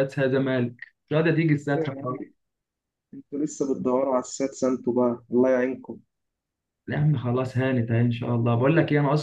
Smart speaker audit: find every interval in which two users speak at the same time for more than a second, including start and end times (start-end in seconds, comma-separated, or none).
none